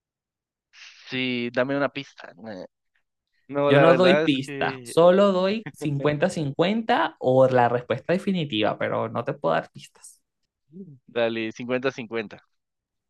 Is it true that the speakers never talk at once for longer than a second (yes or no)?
no